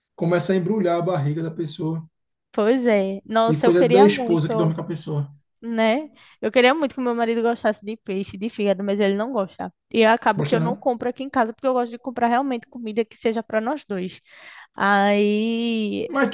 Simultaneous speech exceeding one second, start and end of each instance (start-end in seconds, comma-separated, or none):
3.5-4.8